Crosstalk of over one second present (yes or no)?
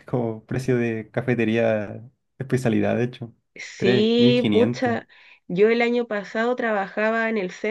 yes